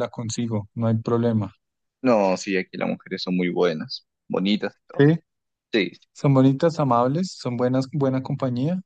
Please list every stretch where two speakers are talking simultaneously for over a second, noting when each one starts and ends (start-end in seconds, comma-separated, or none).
none